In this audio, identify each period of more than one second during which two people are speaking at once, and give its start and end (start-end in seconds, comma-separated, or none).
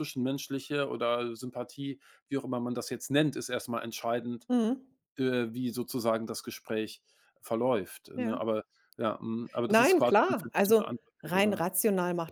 9.7-11.6